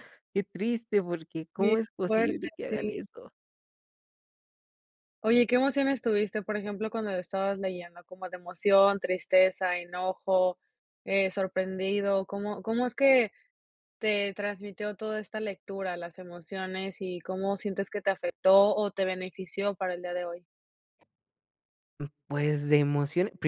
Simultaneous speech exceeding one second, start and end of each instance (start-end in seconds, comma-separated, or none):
1.6-3.0